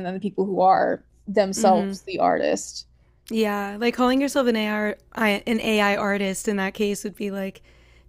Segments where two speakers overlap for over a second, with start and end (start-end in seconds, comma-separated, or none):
none